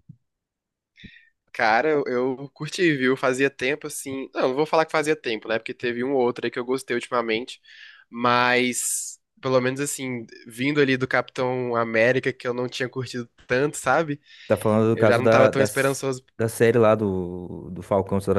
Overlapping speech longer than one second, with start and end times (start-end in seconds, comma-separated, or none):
14.9-16.2